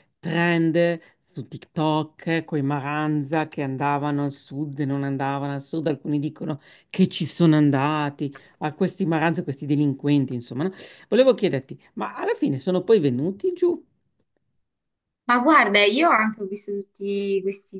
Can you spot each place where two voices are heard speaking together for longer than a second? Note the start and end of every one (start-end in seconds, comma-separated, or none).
none